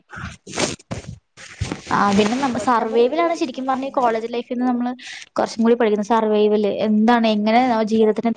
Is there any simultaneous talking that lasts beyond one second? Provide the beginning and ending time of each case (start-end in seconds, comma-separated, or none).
2.6-4.3